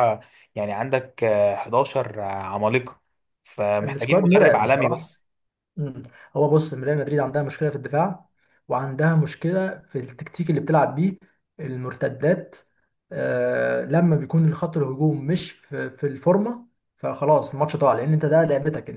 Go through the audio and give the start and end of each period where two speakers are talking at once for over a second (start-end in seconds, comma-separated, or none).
3.8-5.1